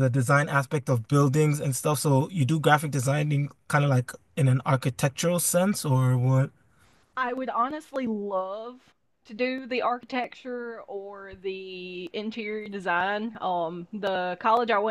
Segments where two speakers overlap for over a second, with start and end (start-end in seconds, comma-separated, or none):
none